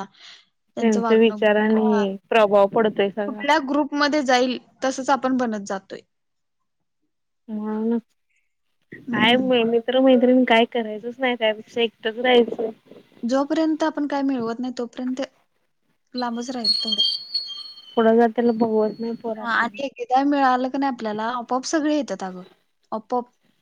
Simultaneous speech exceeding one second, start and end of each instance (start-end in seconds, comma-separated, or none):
0.8-2.0